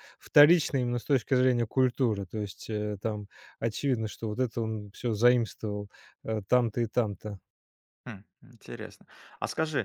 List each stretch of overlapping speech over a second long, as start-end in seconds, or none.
none